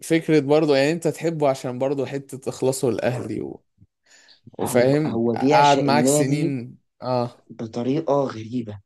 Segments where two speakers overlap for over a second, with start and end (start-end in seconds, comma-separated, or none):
4.6-6.5